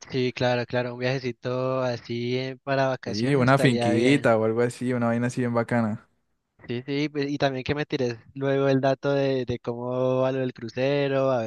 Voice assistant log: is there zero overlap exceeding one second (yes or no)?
no